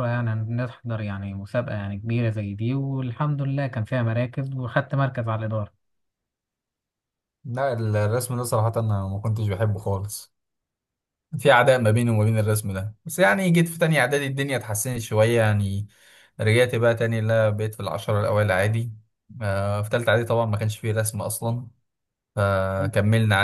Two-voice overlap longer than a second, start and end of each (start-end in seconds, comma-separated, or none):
none